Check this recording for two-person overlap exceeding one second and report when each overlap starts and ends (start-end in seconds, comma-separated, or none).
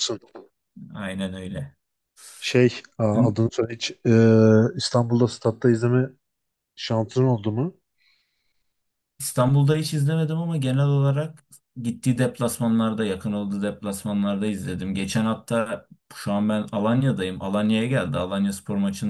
none